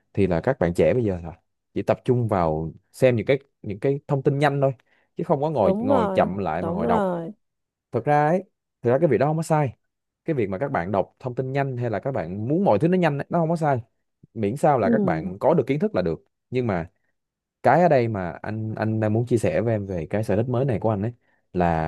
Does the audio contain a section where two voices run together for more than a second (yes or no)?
yes